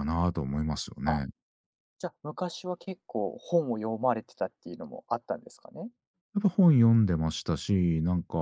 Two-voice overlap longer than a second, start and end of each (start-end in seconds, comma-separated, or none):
none